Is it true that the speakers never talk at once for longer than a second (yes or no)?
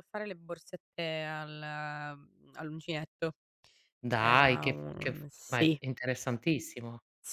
no